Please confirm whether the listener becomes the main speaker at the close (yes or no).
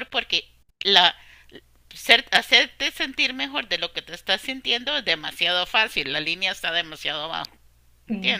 yes